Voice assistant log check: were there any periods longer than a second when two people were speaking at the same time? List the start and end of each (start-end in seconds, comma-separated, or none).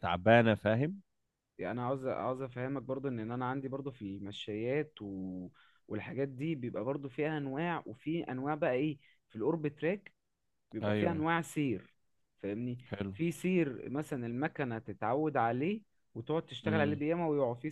none